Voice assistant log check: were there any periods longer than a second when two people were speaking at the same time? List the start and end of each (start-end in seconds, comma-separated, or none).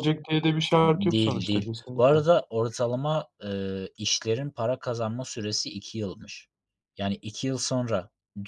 0.8-2.2